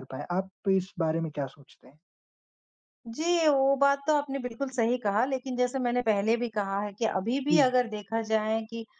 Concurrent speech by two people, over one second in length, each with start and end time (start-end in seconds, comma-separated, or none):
none